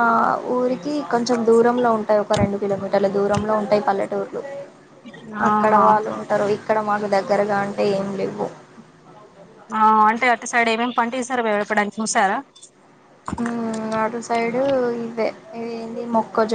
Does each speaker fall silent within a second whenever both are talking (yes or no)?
yes